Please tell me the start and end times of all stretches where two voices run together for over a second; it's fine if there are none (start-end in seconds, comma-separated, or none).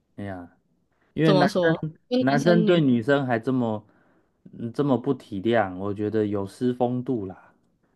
1.2-2.8